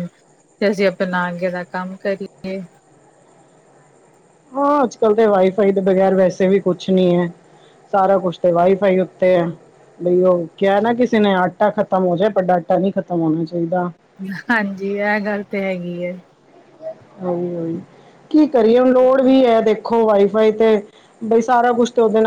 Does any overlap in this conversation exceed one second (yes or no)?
no